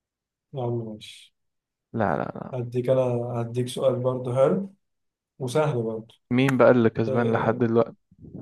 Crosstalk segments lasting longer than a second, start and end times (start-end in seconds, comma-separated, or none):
none